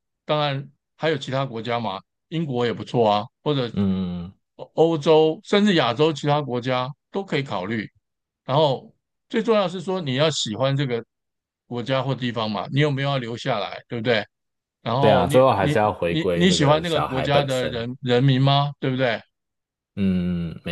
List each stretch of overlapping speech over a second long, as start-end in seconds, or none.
15.0-17.8